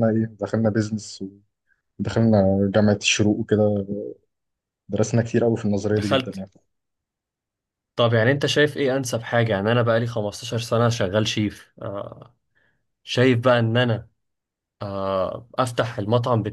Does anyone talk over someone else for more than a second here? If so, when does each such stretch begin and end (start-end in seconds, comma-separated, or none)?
none